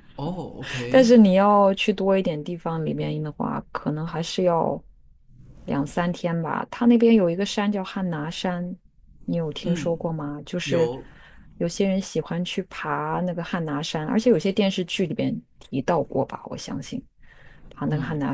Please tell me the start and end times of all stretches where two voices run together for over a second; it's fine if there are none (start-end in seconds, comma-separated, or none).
none